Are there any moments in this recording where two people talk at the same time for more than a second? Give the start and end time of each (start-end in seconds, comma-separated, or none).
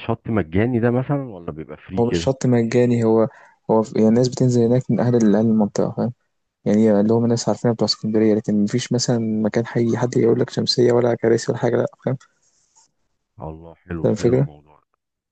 none